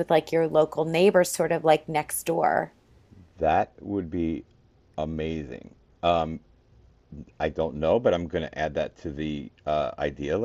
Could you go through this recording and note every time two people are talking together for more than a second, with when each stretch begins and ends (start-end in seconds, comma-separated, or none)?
none